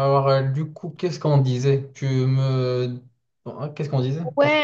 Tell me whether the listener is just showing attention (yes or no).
no